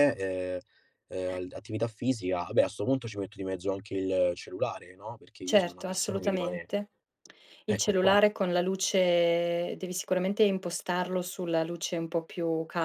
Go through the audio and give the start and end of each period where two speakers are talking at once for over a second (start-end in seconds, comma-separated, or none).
5.5-6.7